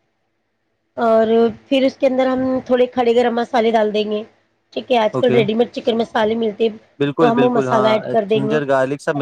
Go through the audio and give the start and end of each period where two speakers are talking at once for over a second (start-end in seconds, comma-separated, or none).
7.0-8.6